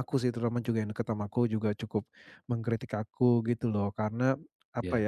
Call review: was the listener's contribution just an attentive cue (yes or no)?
yes